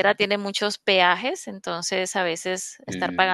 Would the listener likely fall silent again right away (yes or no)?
yes